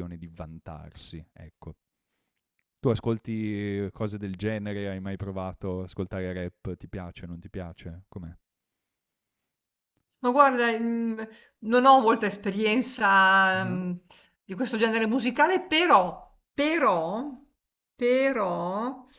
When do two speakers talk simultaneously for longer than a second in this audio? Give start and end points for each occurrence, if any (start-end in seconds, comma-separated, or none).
none